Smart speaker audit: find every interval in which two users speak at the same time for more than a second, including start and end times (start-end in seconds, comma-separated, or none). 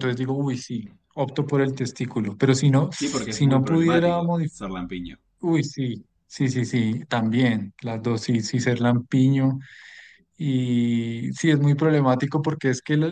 3.3-4.6